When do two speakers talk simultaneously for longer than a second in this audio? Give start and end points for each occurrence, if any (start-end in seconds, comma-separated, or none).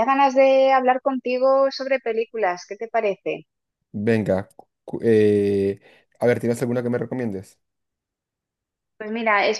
none